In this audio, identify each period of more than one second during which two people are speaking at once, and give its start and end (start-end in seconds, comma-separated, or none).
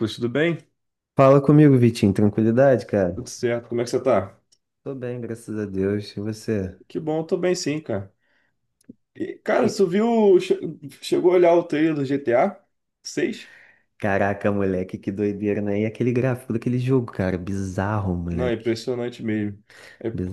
none